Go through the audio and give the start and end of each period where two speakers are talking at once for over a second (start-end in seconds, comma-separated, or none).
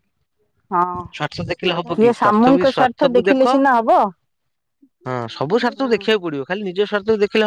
1.2-3.4